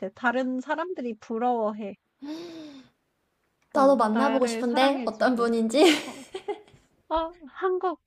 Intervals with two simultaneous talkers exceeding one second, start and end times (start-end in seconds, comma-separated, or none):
3.7-5.5